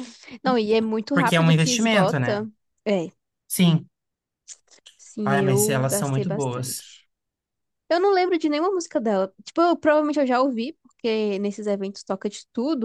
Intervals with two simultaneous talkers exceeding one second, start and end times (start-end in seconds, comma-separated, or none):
1.1-2.5, 5.2-6.9